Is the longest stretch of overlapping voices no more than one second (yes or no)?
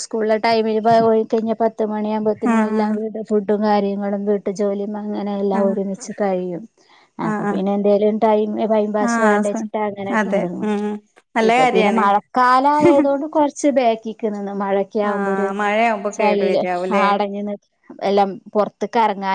no